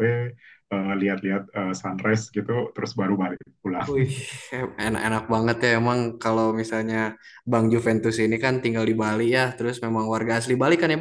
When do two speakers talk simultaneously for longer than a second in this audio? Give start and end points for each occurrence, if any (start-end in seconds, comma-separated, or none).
none